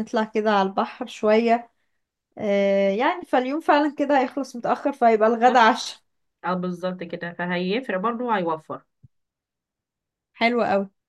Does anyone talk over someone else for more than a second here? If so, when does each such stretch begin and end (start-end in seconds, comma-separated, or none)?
none